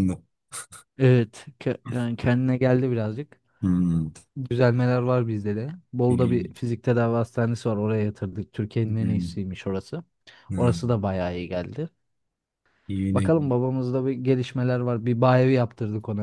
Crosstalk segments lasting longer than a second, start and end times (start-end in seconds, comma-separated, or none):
none